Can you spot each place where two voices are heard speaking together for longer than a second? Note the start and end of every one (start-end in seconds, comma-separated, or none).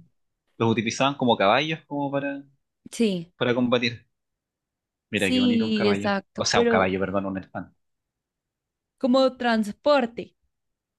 5.1-6.9